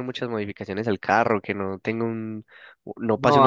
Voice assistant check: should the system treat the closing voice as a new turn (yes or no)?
yes